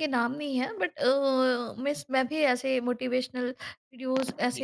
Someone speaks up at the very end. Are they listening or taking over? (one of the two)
taking over